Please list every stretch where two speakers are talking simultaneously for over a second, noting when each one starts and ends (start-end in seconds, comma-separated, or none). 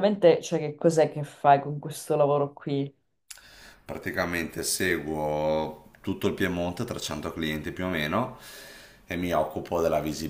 none